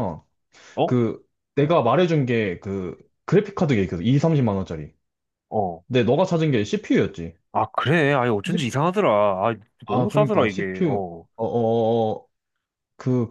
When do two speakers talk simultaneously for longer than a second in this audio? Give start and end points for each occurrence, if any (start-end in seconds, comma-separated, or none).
9.9-11.3